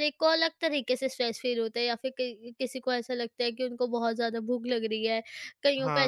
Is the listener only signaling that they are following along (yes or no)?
yes